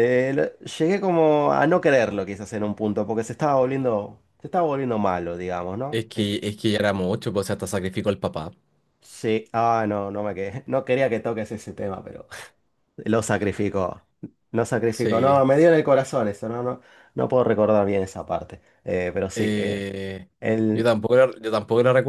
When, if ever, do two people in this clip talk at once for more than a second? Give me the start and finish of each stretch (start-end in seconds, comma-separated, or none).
none